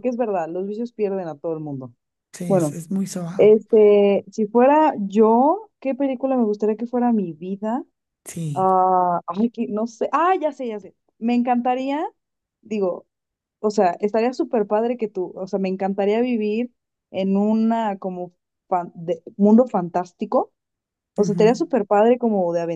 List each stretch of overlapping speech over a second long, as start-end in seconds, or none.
none